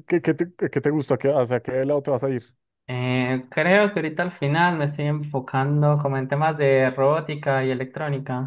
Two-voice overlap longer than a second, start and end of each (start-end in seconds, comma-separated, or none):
none